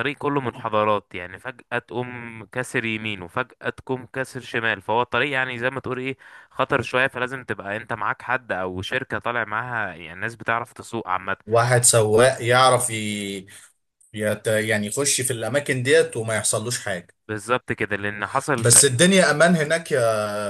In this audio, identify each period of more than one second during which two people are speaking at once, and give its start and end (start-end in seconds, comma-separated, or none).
none